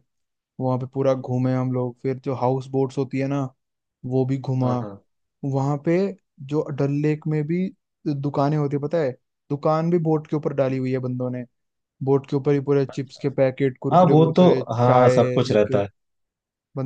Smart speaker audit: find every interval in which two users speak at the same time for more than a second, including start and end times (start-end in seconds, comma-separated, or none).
13.9-15.8